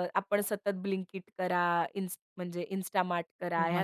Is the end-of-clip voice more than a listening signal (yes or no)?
no